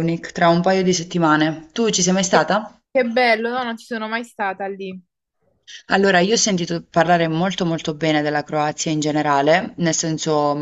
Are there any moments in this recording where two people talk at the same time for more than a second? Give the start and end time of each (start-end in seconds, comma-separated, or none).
none